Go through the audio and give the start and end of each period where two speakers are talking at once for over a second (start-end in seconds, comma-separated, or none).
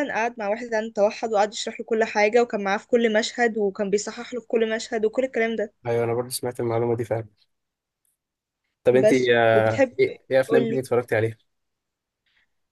9.0-10.8